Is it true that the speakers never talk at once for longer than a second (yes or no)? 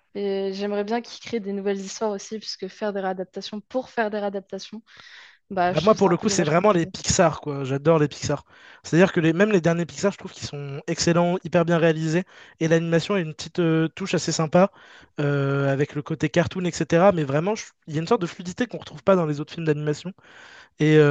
no